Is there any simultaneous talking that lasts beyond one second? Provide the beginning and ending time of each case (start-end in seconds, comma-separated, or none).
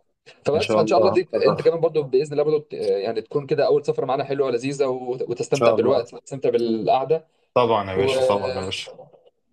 0.5-1.8